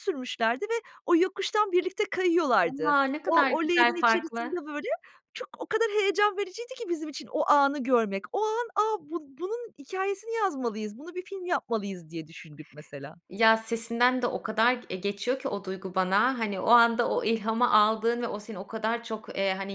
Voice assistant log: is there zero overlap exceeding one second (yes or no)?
no